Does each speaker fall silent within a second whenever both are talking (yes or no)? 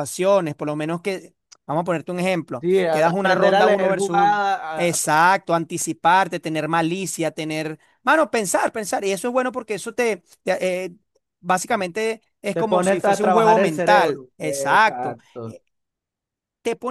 no